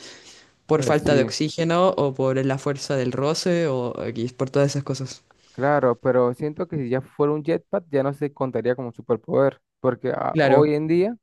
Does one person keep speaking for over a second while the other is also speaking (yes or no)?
no